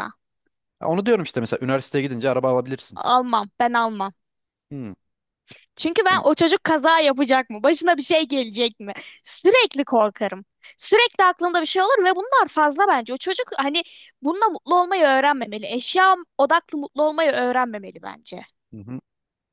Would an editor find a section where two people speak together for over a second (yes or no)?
no